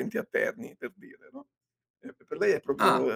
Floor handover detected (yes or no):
no